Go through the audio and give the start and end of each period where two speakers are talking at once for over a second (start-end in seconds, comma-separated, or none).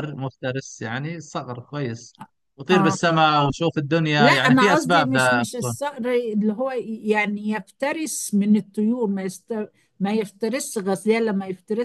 4.2-5.8